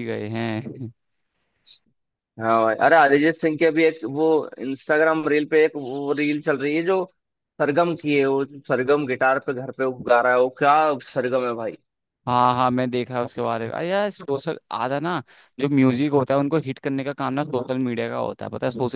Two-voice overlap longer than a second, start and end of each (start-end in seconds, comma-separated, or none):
none